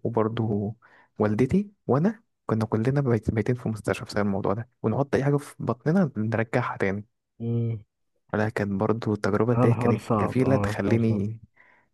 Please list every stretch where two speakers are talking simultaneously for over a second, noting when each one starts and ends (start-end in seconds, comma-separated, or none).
9.6-11.2